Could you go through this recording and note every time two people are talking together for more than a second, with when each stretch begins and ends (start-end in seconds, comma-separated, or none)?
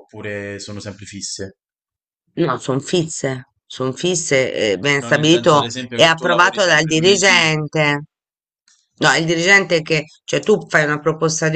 5.0-7.5